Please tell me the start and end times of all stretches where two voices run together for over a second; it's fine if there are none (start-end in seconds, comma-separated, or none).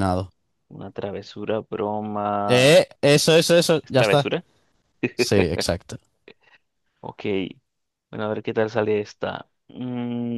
none